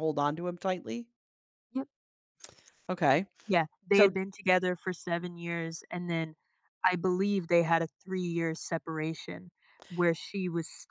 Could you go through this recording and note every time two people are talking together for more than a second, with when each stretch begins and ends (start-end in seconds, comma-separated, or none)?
none